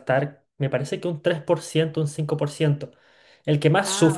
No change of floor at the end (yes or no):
yes